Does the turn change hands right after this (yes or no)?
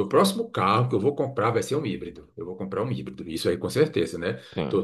no